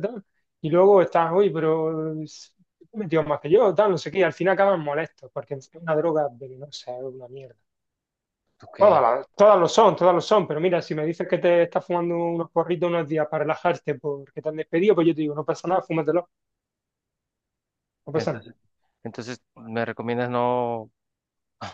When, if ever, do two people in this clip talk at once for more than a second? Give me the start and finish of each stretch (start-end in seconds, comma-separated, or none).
none